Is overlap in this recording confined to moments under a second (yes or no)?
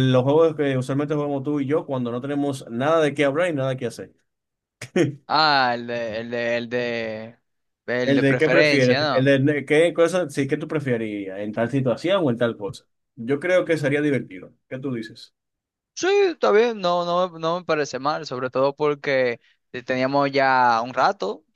no